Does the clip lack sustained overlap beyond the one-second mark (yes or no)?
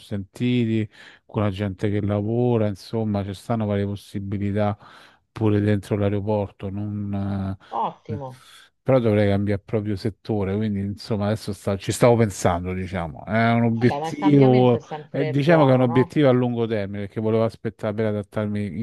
no